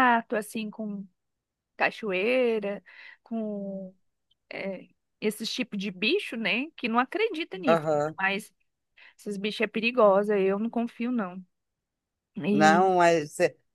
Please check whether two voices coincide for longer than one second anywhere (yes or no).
no